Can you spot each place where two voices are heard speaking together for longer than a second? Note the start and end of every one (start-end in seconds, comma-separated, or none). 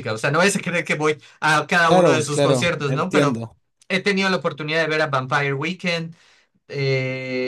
1.8-3.4